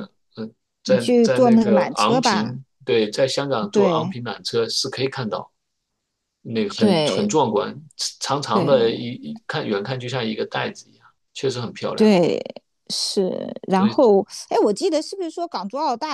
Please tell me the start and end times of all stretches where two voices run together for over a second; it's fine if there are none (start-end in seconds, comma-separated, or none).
0.8-2.5